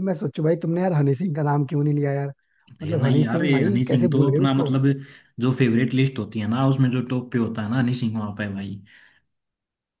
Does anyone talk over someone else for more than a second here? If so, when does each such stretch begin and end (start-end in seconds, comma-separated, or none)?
2.9-4.7